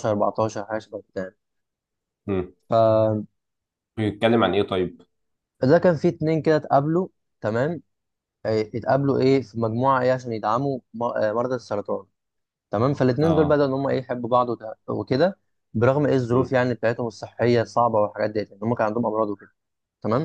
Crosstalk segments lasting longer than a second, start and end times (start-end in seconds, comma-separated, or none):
none